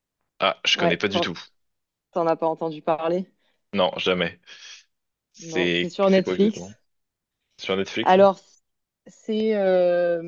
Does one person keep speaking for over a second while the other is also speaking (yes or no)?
yes